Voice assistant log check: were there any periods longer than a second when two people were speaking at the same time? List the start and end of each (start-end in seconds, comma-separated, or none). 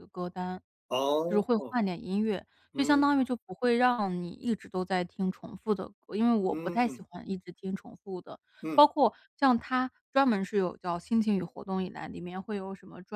none